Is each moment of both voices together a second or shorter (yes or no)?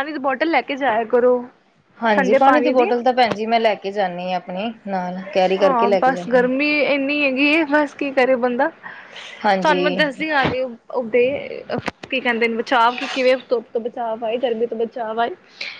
yes